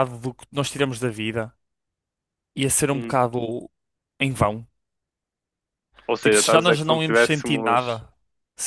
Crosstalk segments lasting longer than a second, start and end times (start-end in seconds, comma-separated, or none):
6.2-8.0